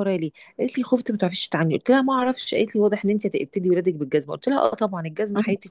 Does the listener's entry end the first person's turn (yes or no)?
no